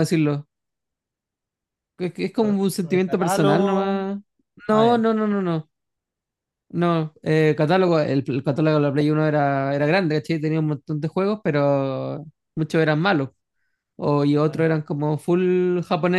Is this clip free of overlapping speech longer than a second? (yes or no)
no